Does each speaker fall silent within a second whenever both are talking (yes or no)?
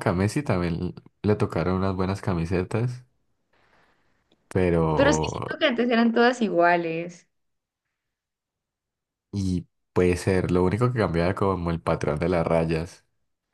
yes